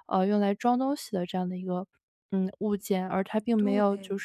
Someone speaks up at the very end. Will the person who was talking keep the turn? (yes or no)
yes